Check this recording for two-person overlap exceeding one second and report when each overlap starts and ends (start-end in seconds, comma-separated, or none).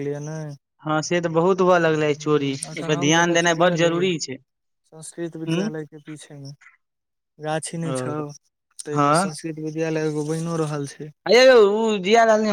2.1-4.0